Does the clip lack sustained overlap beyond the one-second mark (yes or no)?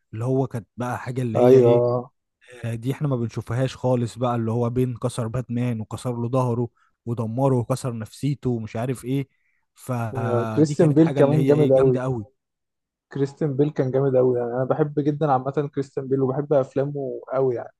no